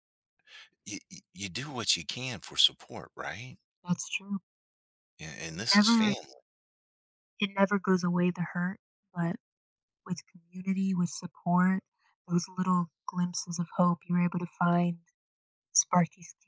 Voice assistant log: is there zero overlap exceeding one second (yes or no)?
yes